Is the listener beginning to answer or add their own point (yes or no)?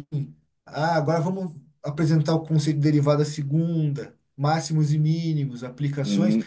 yes